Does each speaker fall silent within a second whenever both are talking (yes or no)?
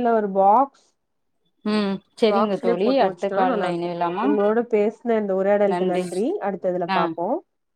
no